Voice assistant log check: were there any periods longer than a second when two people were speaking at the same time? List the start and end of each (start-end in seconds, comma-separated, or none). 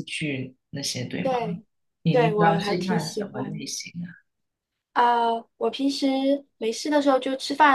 2.1-3.6